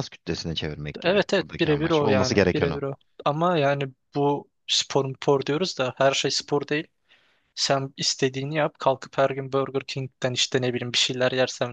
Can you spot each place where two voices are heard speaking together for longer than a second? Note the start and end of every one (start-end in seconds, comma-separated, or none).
1.0-2.8